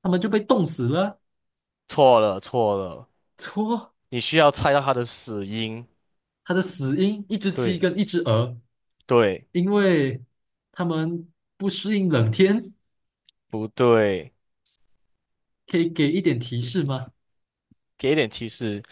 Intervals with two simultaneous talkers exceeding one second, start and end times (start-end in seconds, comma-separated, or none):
none